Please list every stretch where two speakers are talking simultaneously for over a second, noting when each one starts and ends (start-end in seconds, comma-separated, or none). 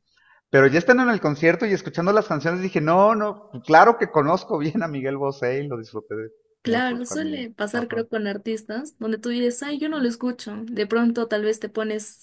6.6-8.1